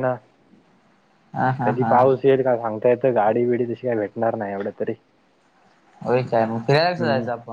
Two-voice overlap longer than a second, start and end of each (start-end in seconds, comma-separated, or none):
none